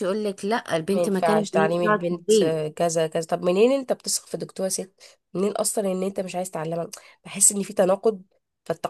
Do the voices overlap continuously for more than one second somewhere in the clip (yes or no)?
yes